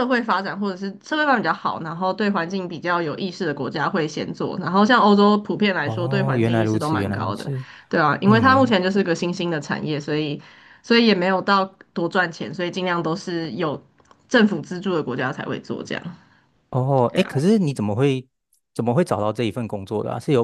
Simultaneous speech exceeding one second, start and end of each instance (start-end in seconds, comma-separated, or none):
5.8-7.5